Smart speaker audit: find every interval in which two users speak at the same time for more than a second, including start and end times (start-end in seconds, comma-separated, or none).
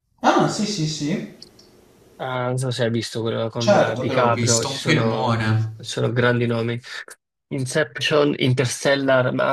3.5-5.7